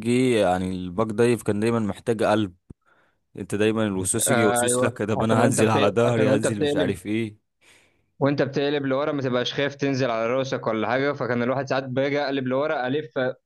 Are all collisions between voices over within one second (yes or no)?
no